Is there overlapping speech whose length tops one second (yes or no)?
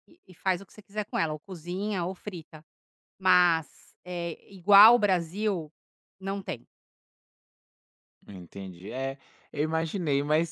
no